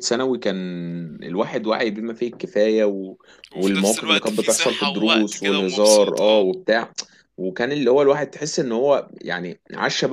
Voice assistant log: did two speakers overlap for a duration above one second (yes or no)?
yes